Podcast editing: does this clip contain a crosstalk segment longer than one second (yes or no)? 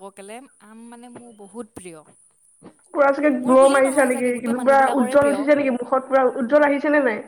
yes